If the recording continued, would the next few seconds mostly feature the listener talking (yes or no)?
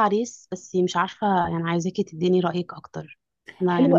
yes